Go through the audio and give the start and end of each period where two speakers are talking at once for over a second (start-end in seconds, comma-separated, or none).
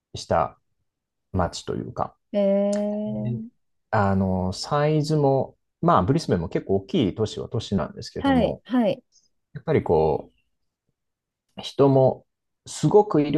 none